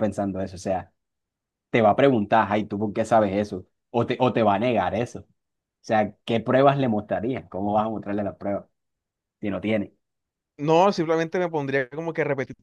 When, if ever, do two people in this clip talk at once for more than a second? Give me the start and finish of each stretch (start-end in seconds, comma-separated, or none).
none